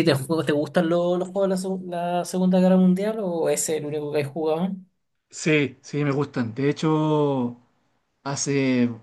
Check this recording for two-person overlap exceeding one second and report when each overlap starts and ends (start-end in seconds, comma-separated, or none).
none